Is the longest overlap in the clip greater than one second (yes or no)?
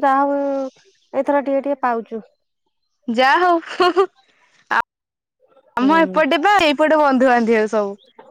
no